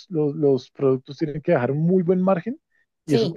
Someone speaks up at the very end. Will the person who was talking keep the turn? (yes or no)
yes